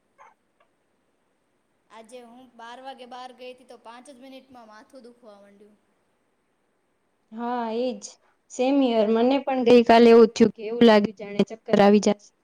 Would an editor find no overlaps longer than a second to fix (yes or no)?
yes